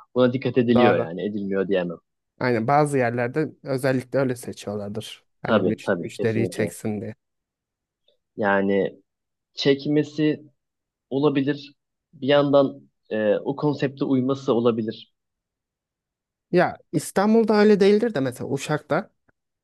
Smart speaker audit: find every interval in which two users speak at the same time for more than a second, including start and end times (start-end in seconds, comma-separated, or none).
5.4-6.7